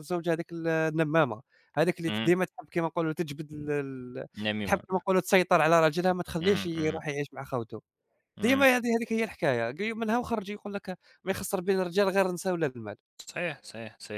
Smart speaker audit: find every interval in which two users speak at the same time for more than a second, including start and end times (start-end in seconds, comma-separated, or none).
none